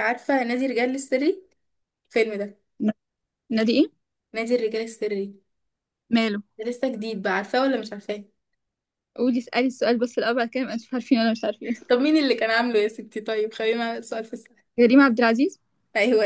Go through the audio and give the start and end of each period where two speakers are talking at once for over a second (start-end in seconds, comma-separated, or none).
none